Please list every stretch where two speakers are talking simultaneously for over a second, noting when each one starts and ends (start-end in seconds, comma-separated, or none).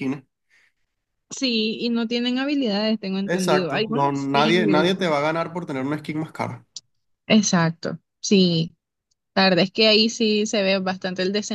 3.3-4.9